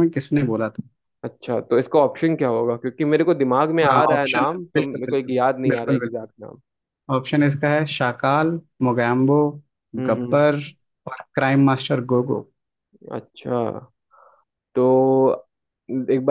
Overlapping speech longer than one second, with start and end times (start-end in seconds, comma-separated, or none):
3.9-6.3